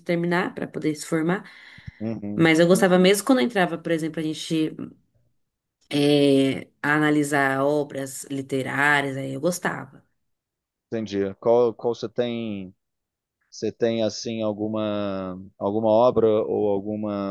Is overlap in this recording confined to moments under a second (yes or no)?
yes